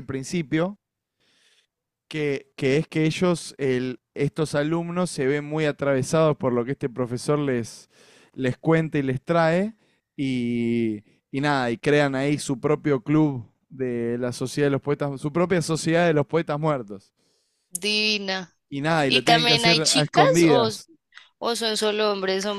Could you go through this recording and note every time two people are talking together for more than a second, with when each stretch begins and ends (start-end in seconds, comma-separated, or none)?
19.0-20.7